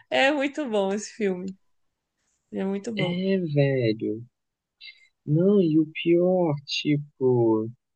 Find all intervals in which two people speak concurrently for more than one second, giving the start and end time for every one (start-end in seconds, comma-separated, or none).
none